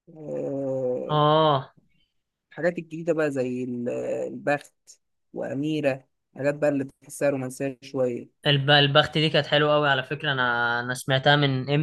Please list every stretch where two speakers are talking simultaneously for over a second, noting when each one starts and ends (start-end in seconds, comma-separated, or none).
none